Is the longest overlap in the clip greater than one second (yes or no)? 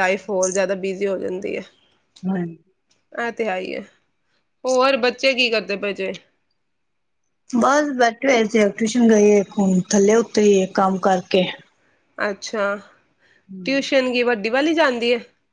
no